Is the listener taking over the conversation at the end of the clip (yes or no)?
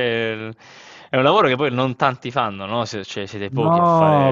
yes